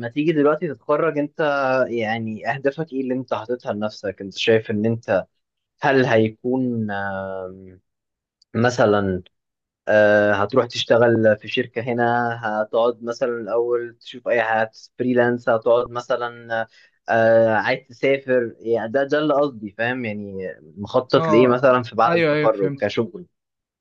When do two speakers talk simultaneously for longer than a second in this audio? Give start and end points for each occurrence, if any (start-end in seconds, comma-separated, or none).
21.1-22.8